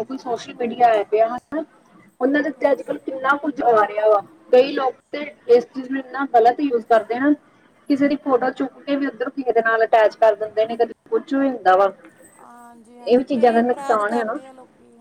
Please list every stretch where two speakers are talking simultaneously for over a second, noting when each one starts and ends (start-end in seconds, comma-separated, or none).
13.0-14.4